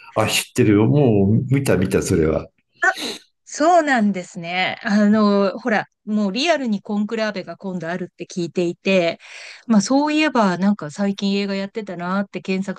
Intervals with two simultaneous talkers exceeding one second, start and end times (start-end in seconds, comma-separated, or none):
none